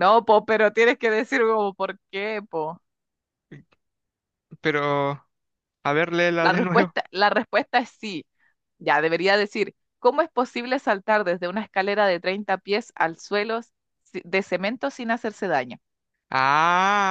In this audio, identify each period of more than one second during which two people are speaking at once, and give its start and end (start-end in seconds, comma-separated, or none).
none